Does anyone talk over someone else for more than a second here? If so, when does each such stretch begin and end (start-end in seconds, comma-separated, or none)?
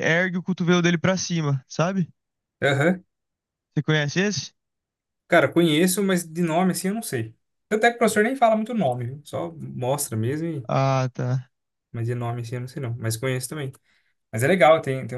none